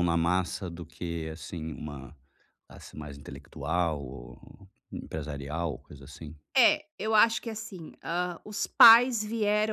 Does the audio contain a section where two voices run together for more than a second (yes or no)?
no